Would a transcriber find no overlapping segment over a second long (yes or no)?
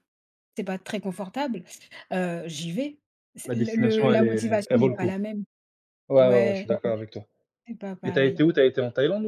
no